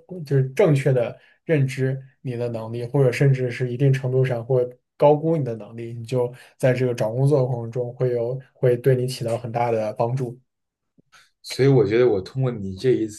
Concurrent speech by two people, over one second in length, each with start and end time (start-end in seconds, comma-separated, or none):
none